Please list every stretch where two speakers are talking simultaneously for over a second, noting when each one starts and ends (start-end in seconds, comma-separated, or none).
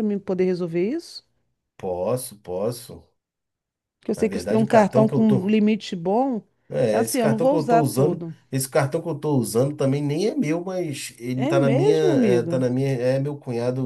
4.2-5.5, 6.9-8.3, 11.3-12.7